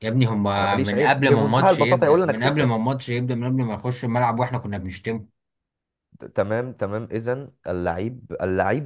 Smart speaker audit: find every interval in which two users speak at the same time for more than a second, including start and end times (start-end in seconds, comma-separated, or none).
0.6-2.8